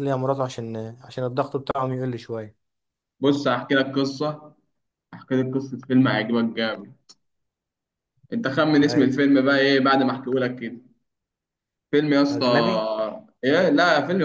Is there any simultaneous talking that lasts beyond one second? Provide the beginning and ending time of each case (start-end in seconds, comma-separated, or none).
none